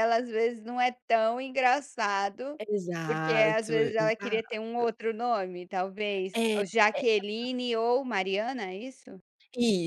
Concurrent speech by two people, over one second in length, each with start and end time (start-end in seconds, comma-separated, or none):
3.1-4.6